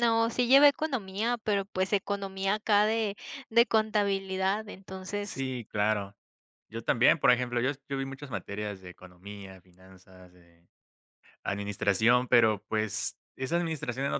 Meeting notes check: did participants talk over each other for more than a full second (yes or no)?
no